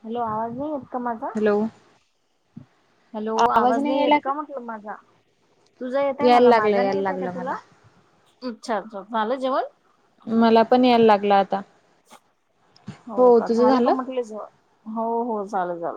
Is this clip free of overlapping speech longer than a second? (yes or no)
no